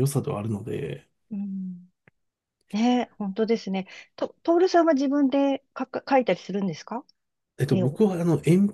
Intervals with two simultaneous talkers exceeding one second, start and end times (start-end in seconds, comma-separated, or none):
none